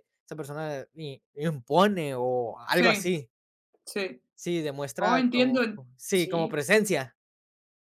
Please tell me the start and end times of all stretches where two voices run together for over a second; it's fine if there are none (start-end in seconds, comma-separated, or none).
5.0-6.6